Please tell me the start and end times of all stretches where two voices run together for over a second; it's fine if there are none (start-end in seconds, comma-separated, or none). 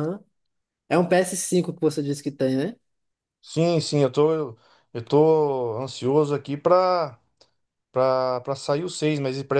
none